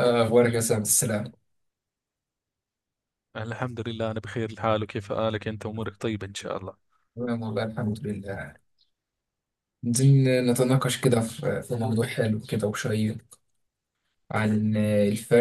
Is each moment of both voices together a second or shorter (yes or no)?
yes